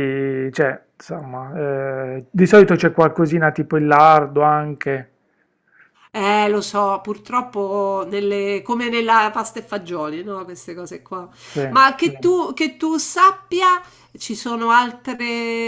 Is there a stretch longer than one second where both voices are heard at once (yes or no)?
no